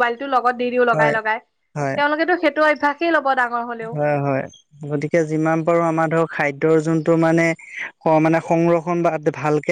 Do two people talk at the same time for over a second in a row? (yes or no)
no